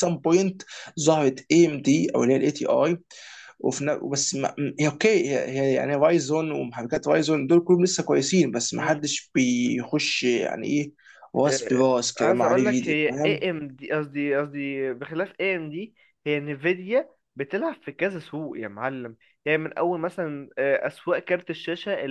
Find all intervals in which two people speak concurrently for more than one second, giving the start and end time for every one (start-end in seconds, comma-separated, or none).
11.5-13.5